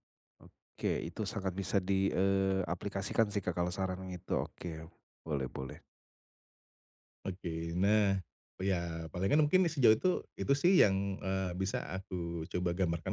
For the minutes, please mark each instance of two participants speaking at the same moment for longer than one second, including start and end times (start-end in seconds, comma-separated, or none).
none